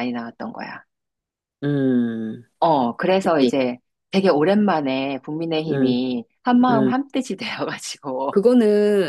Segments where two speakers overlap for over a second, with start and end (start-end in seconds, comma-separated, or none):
none